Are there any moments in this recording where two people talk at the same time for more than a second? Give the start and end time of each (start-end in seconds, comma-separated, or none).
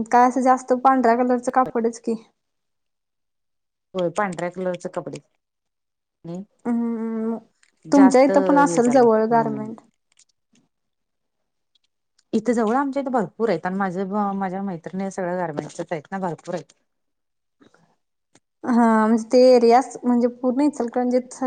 7.9-9.6